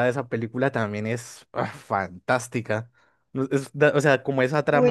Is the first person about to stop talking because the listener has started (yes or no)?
yes